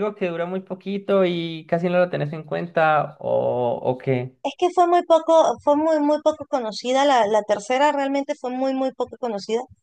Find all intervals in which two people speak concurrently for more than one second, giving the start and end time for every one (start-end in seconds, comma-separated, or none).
none